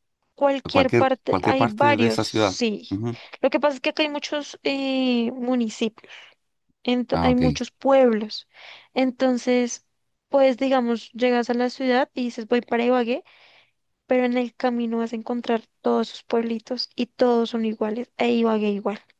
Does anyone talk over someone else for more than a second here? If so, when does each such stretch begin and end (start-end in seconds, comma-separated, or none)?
0.7-2.9